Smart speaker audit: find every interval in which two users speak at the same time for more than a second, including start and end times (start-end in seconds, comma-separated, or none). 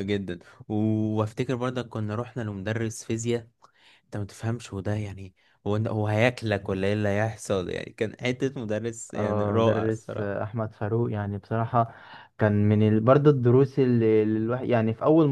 9.1-10.4